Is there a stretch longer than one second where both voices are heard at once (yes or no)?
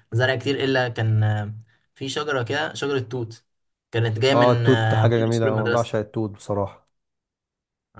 yes